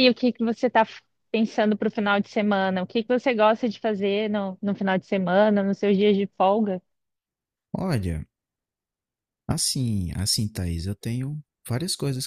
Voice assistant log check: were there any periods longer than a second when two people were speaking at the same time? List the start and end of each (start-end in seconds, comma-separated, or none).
none